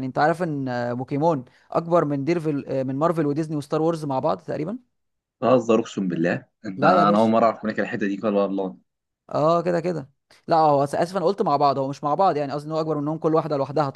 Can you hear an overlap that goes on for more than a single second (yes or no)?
no